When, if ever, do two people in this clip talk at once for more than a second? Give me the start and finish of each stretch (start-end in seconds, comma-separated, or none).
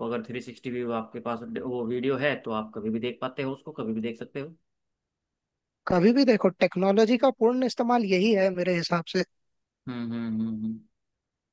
none